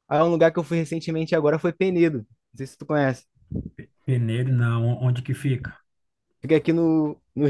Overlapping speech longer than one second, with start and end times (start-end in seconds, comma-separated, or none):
none